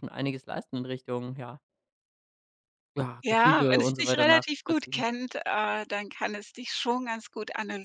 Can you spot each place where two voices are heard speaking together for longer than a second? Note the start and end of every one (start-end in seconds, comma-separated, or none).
3.2-5.0